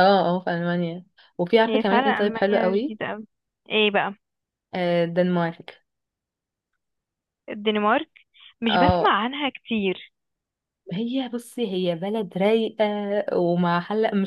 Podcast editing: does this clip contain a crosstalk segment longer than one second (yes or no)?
yes